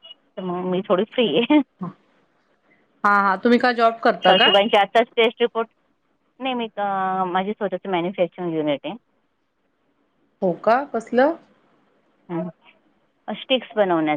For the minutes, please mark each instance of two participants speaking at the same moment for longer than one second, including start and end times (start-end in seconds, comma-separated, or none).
none